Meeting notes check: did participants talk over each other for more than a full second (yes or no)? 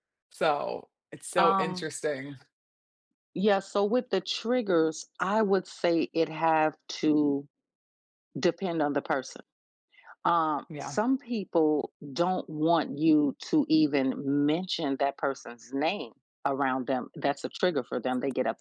no